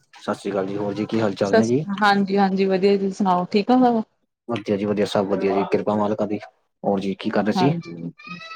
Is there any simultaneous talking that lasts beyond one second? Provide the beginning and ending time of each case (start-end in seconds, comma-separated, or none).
none